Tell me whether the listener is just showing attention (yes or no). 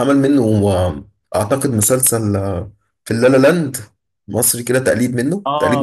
no